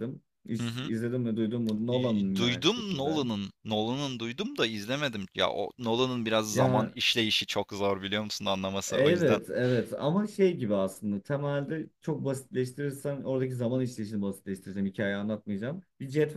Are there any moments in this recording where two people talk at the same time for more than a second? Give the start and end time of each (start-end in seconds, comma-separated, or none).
1.9-3.2